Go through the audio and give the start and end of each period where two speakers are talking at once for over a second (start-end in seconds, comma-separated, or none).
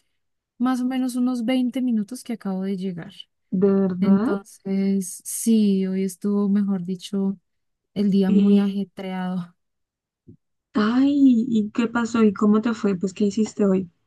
none